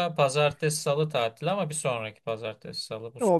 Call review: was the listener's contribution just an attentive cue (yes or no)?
no